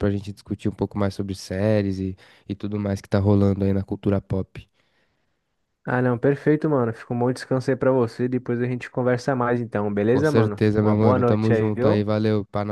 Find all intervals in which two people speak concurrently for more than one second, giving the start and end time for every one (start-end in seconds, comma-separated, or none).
10.1-12.1